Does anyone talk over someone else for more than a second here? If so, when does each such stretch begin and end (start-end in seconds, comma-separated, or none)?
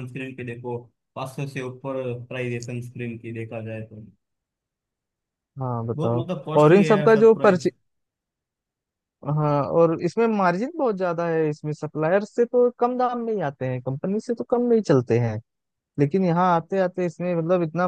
5.9-7.7